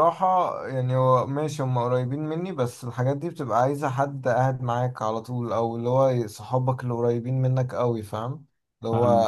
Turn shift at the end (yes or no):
no